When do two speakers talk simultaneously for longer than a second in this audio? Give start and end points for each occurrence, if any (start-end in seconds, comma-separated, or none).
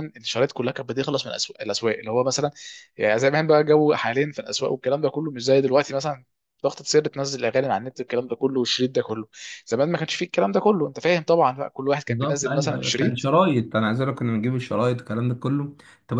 12.1-13.3